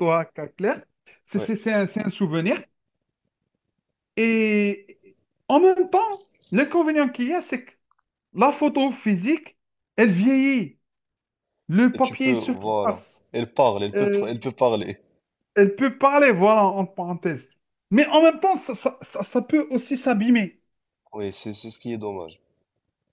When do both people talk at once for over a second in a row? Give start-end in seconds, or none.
11.9-13.2